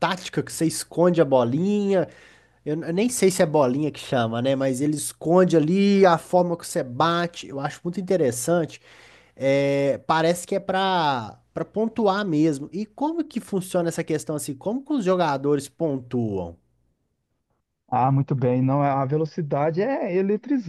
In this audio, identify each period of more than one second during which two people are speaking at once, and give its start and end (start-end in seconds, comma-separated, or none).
none